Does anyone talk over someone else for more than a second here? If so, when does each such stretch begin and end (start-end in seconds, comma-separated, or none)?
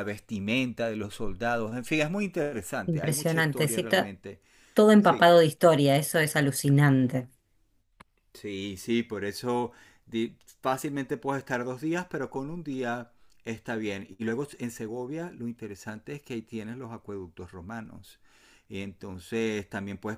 2.9-4.1